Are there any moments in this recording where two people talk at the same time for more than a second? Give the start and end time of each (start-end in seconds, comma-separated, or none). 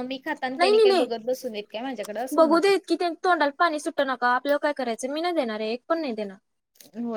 none